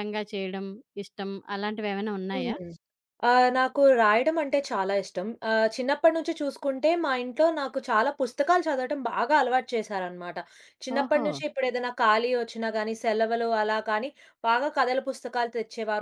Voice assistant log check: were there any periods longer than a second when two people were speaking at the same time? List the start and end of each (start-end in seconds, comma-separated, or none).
none